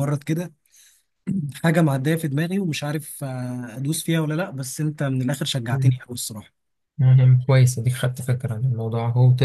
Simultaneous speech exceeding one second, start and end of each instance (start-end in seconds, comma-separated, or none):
none